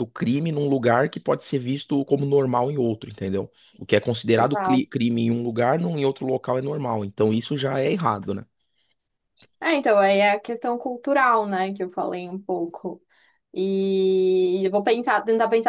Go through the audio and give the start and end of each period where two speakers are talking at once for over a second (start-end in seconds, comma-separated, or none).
none